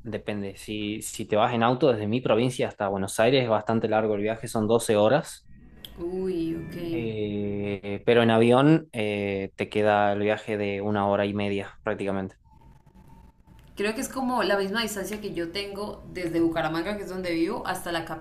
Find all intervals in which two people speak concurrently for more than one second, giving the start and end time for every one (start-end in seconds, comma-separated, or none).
none